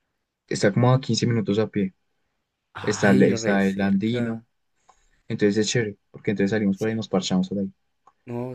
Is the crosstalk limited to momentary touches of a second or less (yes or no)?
no